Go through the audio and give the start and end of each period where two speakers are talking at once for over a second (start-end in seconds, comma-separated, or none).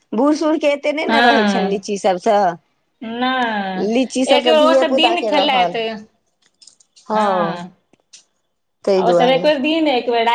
3.9-5.8